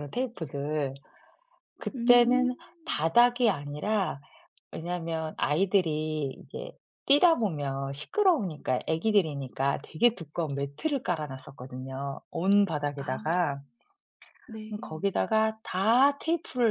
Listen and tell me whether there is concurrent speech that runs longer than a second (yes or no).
no